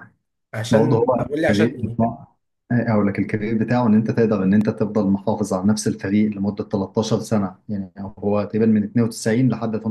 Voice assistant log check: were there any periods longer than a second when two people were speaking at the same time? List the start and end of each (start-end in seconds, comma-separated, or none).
0.7-2.2